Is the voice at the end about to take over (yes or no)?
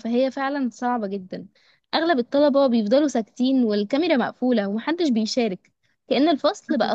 no